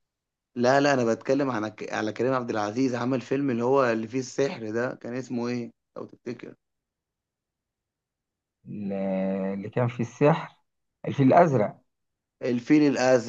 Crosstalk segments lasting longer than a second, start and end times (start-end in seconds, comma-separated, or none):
none